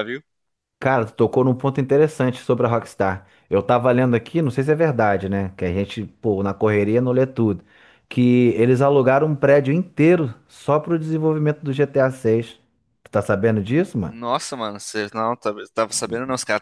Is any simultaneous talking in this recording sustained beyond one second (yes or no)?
no